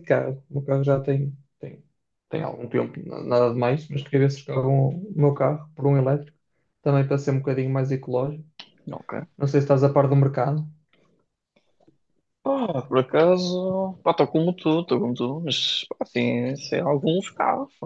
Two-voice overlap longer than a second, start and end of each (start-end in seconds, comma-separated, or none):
none